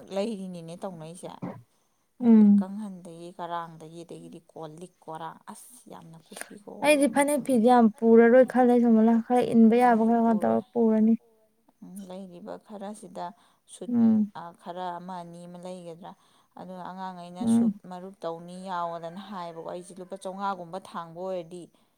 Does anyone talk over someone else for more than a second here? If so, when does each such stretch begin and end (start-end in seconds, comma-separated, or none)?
7.9-10.6